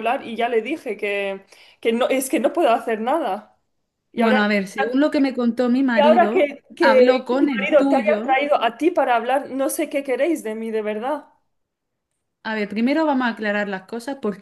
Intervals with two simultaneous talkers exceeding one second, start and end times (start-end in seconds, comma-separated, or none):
5.9-8.4